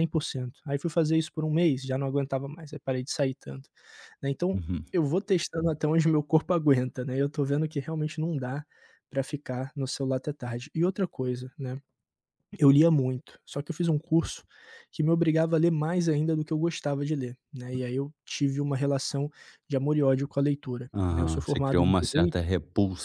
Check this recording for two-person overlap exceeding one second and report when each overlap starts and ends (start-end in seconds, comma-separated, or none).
20.9-22.4